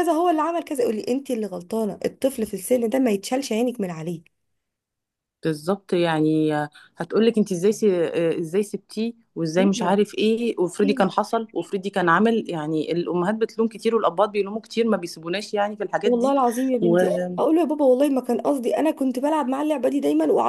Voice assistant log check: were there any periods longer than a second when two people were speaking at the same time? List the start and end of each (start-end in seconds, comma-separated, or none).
none